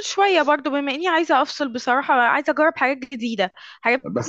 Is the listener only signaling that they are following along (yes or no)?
no